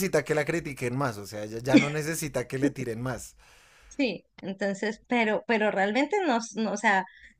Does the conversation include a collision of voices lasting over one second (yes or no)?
no